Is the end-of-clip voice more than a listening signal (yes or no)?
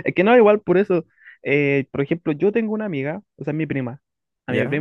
no